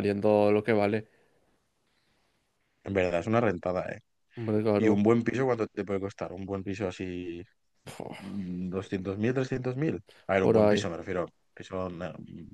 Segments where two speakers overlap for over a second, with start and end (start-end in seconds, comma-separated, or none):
none